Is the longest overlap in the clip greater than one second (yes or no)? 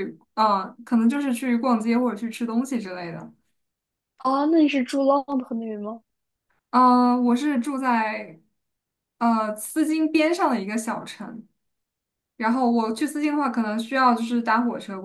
no